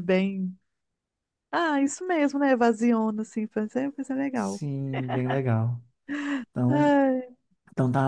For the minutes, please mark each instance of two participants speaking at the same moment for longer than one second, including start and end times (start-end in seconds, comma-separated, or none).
none